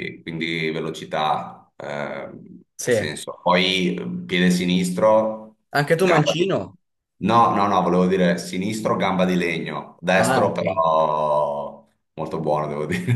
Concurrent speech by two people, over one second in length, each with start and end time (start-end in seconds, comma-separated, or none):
none